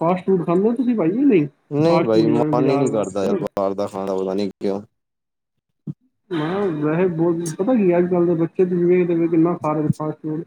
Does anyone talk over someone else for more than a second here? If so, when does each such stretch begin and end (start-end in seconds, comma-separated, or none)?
none